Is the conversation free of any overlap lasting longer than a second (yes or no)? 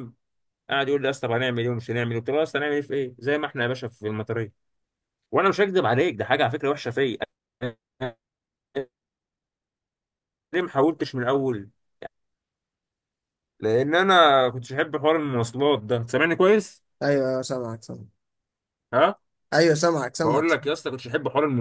yes